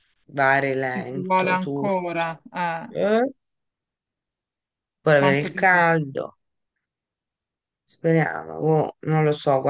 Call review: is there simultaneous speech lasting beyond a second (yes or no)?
yes